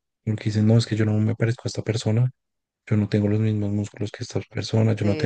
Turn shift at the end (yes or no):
yes